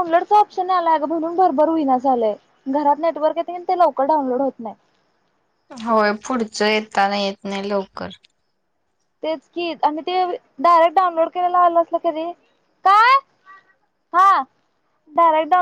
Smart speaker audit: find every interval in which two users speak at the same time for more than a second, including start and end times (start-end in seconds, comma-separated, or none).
none